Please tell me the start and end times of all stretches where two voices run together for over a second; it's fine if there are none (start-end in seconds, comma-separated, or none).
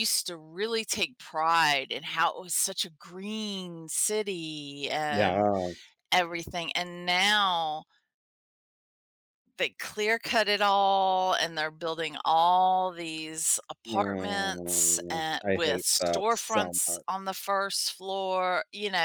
13.9-17.1